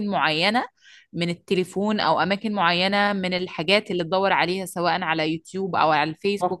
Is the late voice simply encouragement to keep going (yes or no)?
no